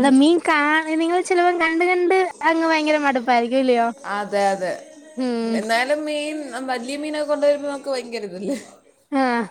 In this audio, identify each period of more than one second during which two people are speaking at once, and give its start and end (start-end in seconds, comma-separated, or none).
none